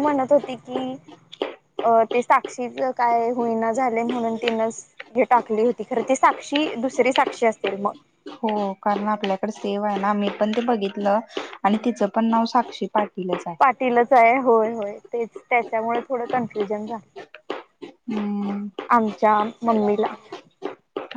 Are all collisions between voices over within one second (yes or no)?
yes